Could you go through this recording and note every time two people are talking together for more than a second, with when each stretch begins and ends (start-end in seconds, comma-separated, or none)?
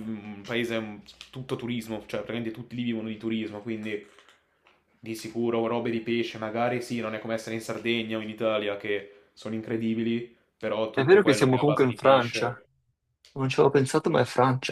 10.9-12.6